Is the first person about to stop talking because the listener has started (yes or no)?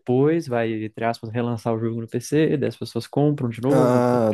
yes